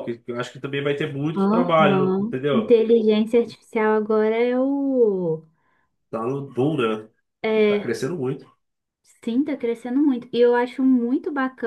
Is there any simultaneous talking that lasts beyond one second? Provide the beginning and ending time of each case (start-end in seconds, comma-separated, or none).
1.4-2.8